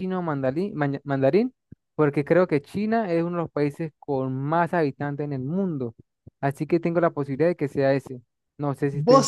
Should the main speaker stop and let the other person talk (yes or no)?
yes